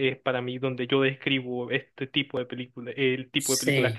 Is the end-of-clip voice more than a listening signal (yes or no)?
no